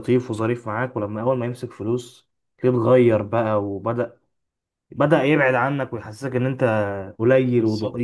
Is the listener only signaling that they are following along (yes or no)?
no